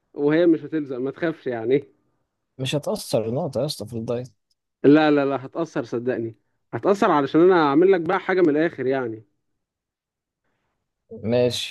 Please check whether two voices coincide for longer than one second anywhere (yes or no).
no